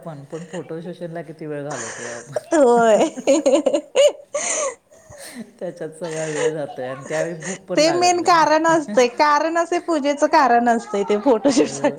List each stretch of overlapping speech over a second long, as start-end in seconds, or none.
none